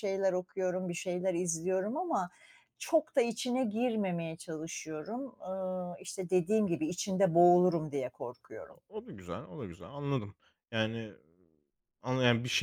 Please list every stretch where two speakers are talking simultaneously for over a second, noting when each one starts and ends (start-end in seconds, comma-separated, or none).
none